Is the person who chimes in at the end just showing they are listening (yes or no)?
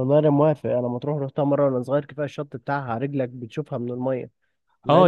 no